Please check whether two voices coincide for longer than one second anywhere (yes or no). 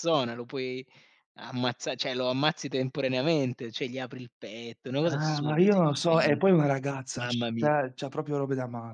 yes